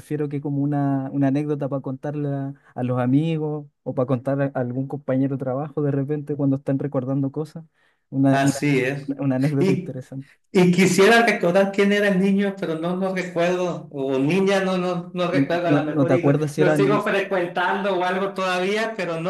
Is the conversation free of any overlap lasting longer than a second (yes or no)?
no